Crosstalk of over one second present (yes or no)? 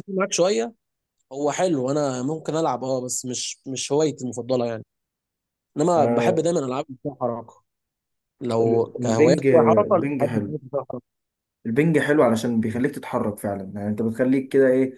yes